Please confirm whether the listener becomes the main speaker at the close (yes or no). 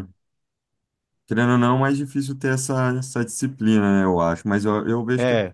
no